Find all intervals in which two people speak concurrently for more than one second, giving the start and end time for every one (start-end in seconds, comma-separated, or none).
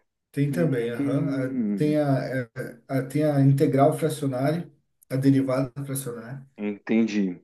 0.5-2.0